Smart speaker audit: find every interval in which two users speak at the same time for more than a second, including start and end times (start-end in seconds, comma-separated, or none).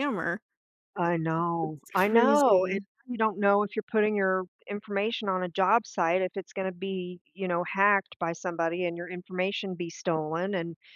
1.4-2.8